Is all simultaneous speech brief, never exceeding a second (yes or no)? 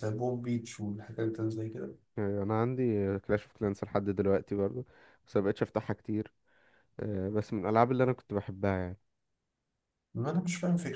yes